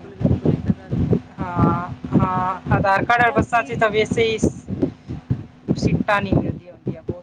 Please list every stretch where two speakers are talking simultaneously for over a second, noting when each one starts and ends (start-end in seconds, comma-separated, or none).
none